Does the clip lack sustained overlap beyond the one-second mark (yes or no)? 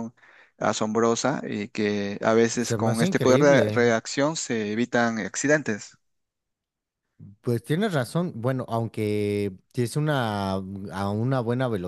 no